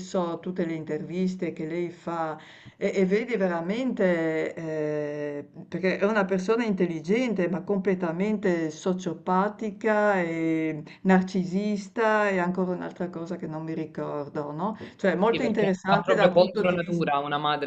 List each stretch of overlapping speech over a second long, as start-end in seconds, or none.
15.3-17.1